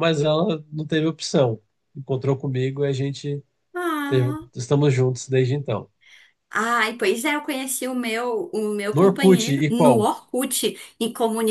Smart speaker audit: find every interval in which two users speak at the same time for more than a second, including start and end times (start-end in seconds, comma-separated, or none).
8.9-10.1